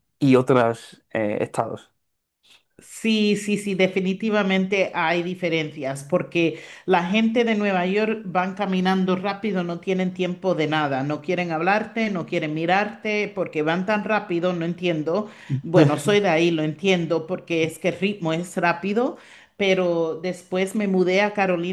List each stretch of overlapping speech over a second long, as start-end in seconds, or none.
none